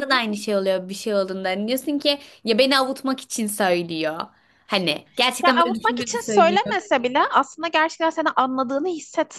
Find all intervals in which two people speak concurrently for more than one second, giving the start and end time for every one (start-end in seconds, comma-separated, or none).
5.4-6.8